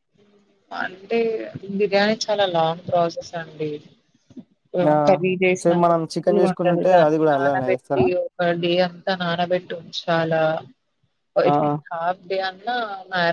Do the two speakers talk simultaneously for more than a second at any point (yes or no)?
yes